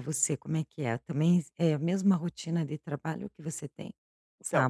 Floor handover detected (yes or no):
yes